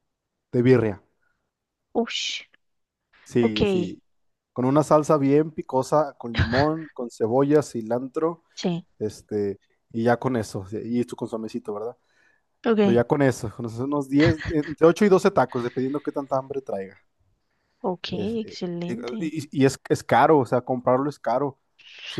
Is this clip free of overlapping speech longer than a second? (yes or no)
yes